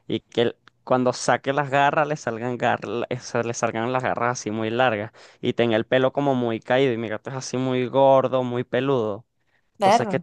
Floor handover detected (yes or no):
no